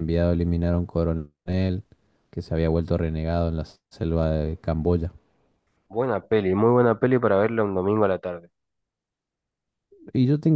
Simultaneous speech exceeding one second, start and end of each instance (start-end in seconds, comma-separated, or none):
none